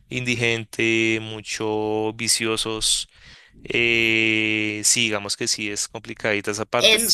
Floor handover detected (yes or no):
yes